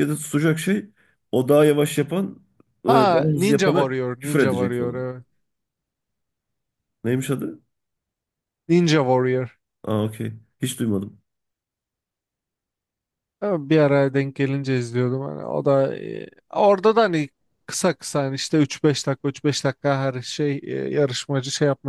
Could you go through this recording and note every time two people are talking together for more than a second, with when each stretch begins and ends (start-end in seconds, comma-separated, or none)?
2.9-5.1